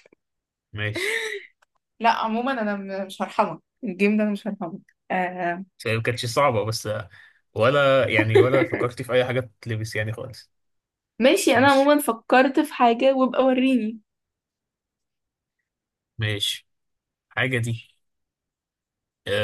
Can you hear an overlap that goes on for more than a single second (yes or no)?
no